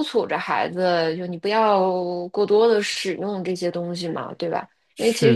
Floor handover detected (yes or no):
no